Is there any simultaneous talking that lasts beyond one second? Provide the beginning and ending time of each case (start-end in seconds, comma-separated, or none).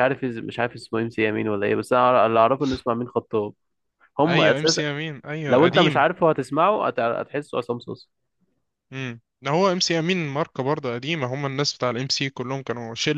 none